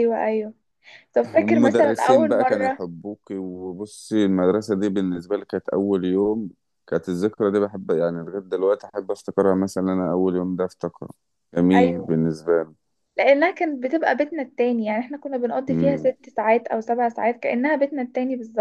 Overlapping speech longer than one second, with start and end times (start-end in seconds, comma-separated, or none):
1.4-2.8